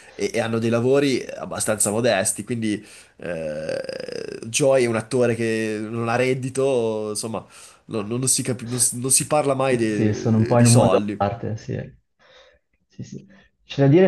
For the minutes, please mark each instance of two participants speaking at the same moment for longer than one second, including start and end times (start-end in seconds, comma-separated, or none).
9.8-11.2